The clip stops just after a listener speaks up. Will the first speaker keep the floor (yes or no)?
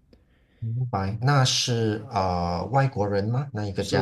no